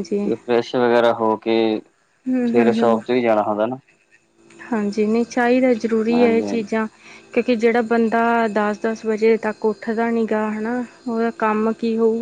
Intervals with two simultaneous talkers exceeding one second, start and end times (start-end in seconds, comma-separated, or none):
none